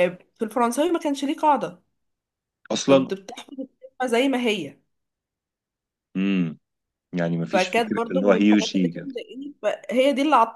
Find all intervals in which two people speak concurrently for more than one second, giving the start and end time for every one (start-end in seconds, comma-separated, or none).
7.5-9.1